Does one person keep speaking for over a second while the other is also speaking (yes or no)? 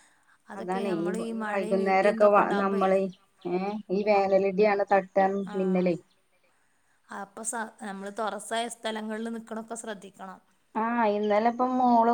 yes